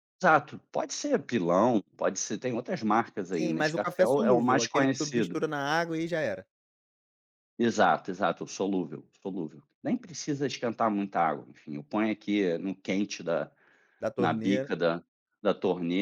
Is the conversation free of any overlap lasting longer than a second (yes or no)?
no